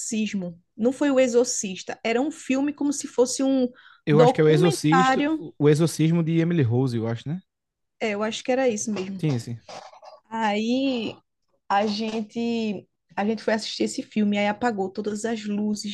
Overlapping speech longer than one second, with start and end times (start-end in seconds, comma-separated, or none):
4.1-5.4